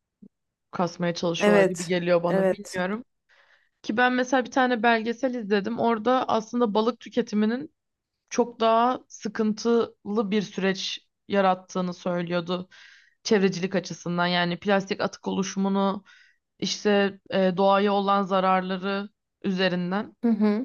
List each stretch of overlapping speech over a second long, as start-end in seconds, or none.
1.4-2.9